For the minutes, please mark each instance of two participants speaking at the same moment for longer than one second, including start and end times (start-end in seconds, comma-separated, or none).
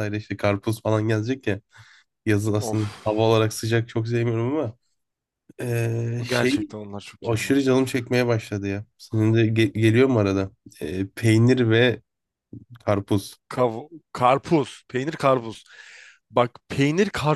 none